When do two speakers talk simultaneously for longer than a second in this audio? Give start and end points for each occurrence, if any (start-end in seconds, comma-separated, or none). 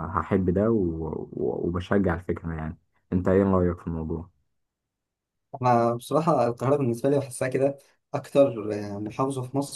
none